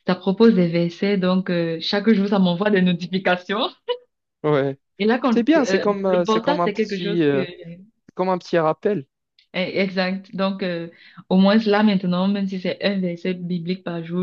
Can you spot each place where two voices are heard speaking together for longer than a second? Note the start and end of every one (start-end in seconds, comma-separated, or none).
5.3-7.5